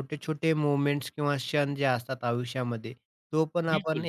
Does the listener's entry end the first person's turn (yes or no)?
no